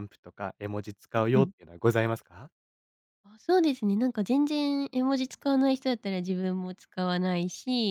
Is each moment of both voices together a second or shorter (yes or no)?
yes